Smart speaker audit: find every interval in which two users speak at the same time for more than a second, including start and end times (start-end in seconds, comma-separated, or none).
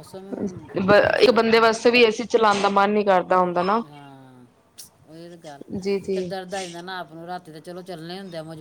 none